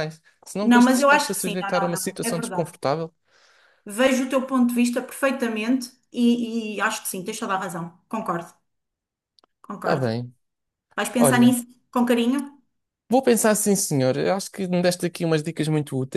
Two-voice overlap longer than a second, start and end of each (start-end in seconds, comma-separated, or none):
0.6-2.7